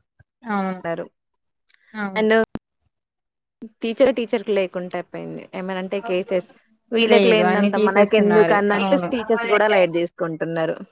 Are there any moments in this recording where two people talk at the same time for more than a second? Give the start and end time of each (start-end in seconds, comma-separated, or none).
7.1-9.1